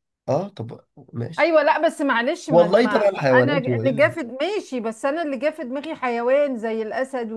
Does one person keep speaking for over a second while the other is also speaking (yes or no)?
yes